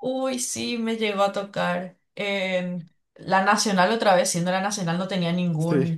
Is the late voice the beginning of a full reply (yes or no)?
no